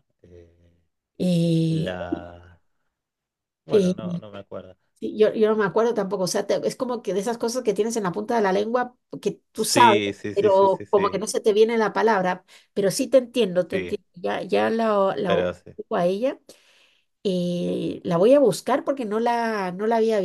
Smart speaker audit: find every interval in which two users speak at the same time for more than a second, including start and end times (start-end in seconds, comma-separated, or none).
9.5-11.2